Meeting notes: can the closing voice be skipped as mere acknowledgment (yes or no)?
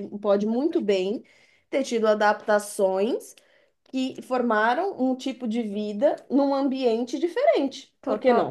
no